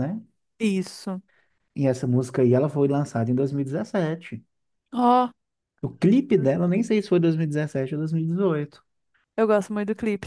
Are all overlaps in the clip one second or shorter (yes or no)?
yes